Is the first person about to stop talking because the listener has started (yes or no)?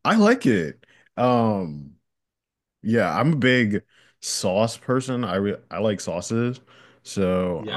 yes